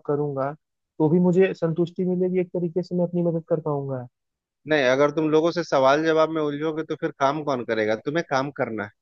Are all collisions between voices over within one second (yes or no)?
yes